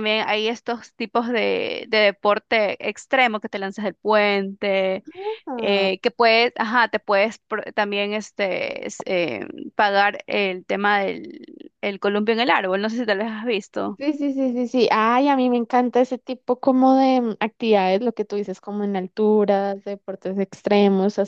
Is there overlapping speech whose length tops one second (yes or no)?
no